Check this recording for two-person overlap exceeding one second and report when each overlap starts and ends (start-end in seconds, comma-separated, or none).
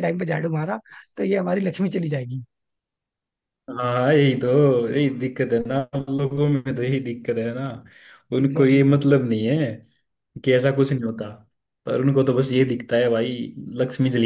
none